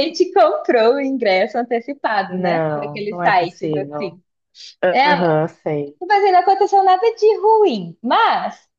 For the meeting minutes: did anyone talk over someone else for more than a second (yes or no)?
yes